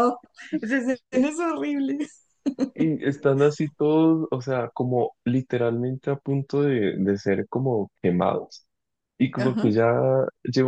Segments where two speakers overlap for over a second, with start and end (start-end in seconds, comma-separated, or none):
none